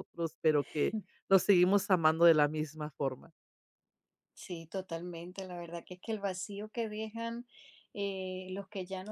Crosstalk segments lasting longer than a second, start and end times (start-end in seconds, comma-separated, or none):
none